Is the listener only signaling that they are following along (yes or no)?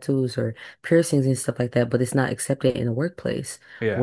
yes